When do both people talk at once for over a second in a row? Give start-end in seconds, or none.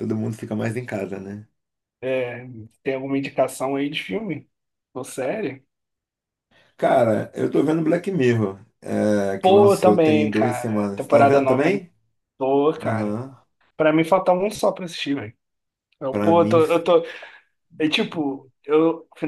9.4-11.8